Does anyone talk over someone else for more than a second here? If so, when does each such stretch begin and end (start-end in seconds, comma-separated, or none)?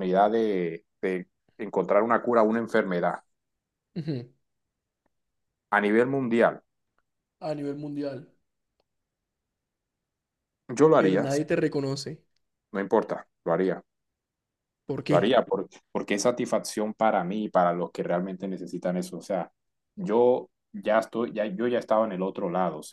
none